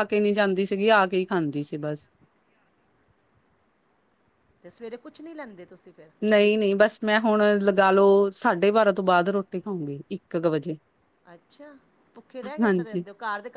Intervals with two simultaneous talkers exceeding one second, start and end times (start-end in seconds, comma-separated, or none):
none